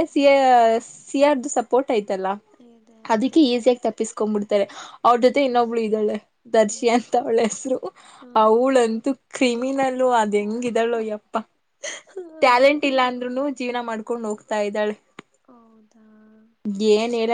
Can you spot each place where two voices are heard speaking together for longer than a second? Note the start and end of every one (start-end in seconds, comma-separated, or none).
none